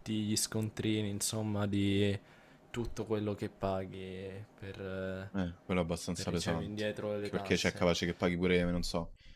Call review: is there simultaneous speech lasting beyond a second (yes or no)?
yes